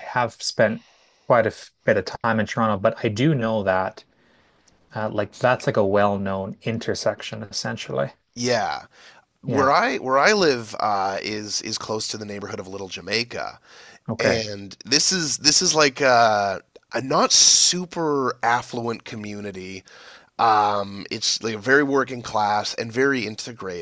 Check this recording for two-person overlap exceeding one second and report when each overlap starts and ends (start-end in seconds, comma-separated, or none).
none